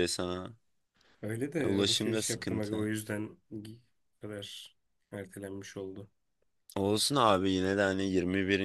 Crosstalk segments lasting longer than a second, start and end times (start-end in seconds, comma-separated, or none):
1.6-2.9